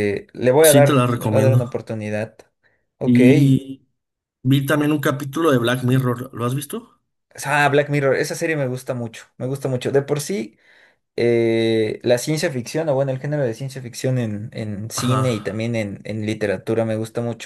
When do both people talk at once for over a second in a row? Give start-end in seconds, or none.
0.6-1.8